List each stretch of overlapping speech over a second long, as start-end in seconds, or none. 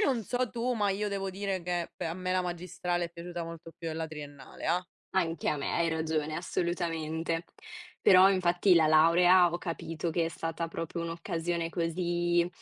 none